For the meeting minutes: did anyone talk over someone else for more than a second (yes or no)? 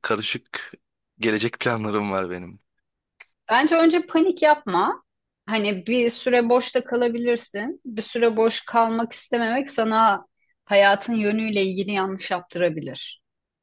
no